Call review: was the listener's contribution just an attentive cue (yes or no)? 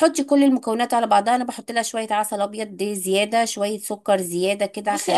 no